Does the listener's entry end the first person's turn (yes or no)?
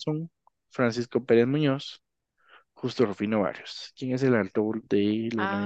yes